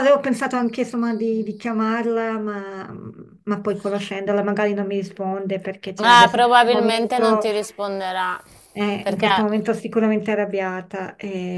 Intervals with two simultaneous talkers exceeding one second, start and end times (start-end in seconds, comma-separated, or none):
6.1-7.5